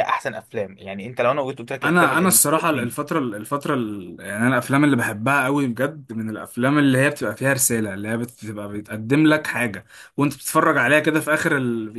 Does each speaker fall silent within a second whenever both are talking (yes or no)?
yes